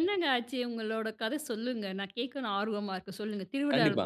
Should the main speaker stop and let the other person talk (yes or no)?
yes